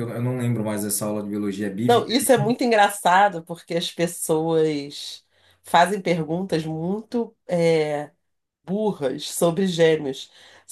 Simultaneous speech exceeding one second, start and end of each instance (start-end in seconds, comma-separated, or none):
none